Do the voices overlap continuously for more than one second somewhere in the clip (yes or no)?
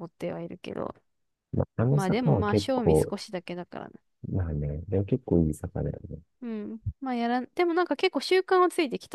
yes